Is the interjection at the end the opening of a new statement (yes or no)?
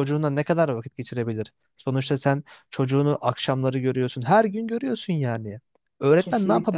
no